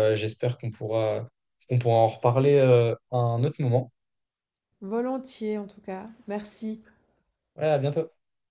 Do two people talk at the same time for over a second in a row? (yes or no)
no